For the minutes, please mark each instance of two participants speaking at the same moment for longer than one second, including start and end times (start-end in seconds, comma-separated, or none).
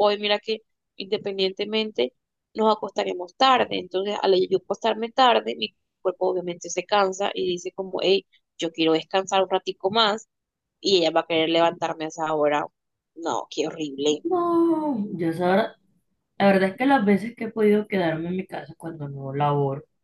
none